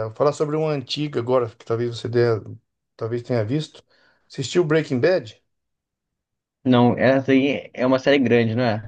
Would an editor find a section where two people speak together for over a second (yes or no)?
no